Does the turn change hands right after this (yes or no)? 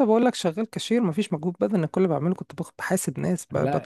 no